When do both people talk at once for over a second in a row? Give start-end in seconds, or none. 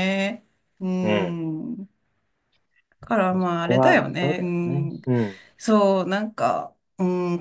3.3-5.0